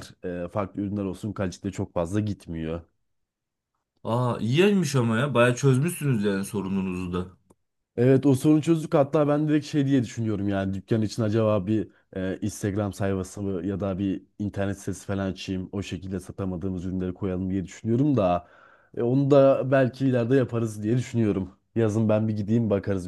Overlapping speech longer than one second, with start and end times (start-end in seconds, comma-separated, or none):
none